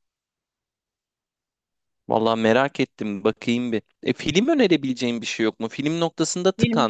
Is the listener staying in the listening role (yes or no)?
yes